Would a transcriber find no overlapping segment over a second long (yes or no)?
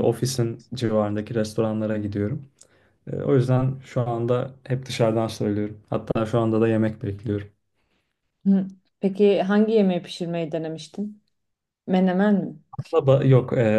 yes